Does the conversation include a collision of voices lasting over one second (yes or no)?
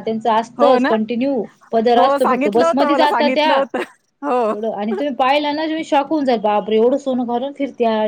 yes